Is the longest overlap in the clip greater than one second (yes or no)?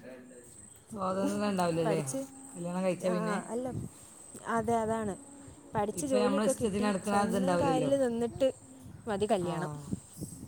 yes